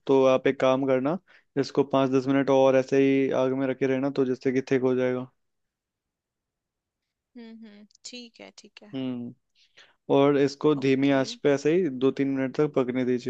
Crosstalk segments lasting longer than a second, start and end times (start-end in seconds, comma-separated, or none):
none